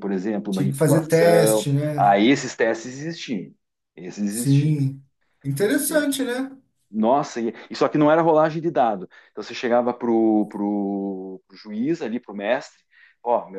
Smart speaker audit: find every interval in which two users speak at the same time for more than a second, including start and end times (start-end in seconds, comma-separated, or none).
0.5-2.2